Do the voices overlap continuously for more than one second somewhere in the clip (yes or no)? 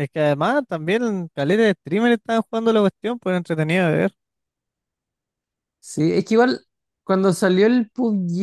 no